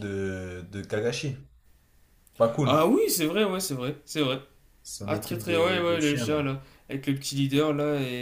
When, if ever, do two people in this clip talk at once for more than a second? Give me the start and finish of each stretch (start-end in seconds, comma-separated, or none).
5.0-6.4